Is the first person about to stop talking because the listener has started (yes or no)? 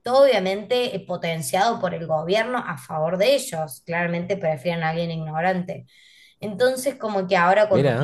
no